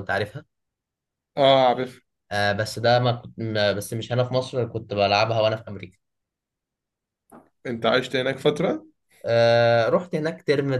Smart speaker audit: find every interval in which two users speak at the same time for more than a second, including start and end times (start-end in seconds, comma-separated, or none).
none